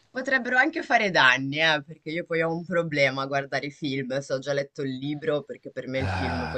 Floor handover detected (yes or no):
no